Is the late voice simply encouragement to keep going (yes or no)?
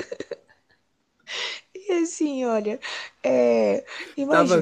no